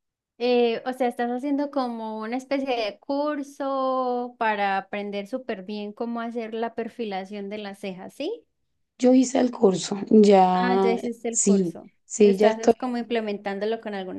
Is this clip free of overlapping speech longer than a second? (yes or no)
no